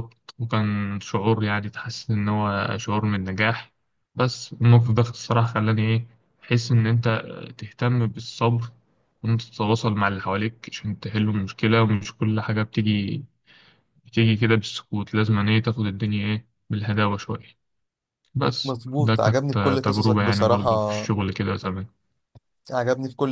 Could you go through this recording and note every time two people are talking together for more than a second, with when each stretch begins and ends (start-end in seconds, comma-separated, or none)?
18.6-20.7